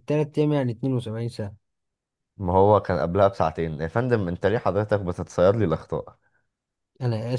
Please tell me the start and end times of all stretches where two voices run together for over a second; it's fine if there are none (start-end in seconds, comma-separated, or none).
none